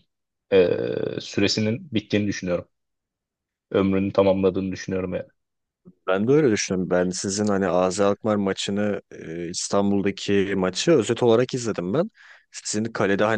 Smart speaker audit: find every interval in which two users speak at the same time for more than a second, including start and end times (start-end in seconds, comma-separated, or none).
none